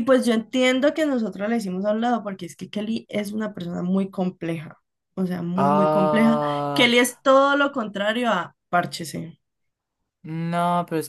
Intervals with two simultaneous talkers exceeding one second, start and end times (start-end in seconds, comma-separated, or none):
5.5-6.9